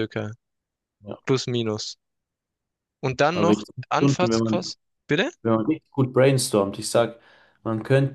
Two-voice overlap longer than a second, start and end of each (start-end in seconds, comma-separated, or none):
3.3-4.7